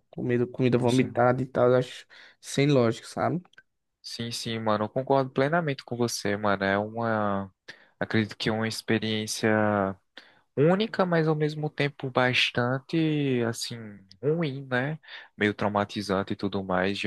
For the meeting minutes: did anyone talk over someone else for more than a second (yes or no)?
no